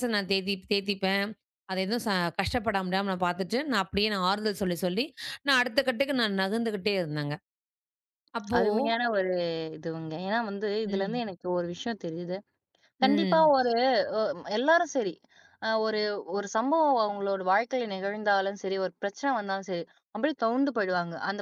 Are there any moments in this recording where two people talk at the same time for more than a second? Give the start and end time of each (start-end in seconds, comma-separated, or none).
none